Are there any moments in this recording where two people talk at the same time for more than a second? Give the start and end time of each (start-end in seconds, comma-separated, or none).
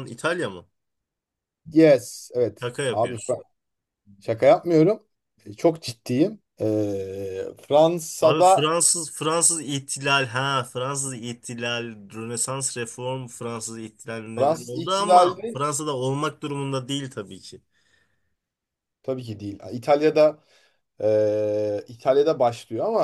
14.4-15.6